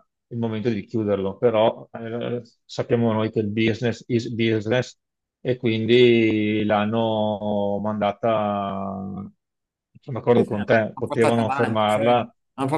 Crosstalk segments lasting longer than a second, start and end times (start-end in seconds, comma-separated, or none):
10.3-12.0